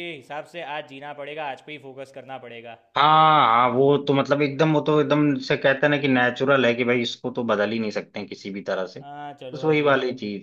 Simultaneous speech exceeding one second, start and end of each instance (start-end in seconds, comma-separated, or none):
none